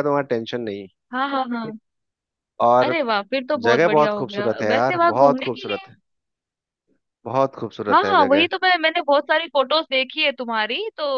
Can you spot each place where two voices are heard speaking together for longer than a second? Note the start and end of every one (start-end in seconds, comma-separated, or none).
3.7-5.9